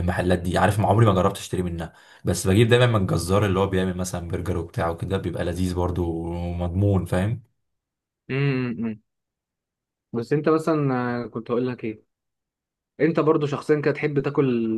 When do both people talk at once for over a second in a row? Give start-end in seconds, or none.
none